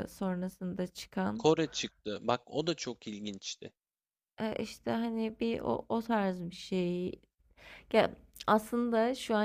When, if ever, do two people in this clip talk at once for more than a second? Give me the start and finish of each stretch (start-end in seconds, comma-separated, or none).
none